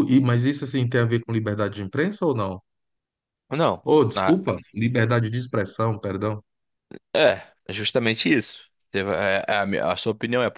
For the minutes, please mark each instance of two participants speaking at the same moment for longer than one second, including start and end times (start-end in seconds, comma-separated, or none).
none